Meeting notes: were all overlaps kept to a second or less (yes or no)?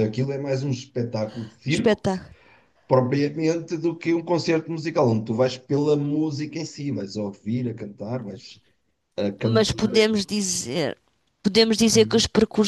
yes